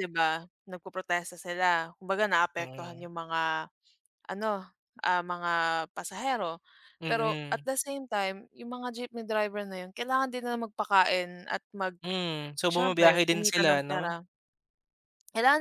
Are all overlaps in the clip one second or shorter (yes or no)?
no